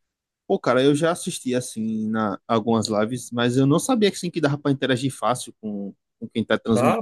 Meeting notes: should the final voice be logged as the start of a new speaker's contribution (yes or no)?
yes